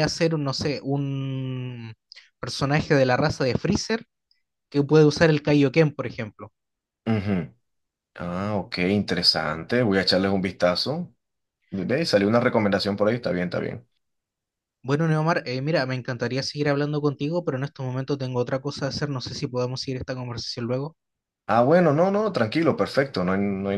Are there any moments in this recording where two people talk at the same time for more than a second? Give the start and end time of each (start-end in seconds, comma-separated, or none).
none